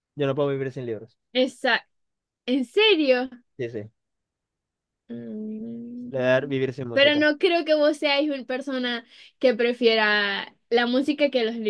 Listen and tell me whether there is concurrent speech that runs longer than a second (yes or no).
no